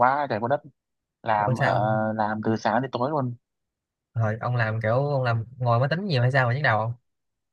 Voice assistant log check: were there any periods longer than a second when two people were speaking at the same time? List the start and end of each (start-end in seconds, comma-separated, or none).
none